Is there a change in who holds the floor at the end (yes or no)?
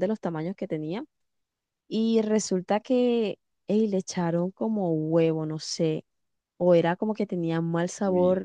no